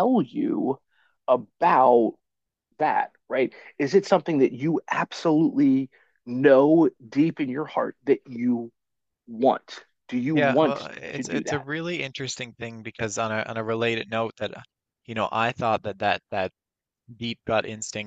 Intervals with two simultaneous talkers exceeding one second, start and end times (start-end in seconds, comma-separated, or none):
10.3-11.7